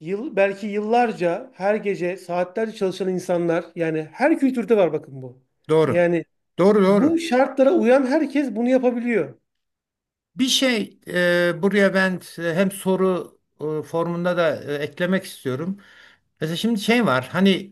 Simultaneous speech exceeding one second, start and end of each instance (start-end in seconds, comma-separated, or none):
none